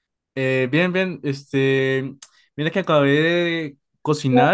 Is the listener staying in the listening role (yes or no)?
yes